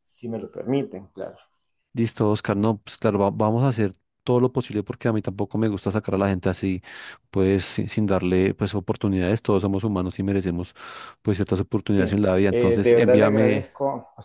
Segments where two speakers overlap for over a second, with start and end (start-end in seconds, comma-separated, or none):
11.9-13.7